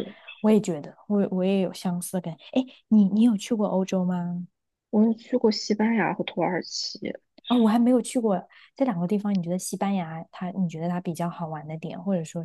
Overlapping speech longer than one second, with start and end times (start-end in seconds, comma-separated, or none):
none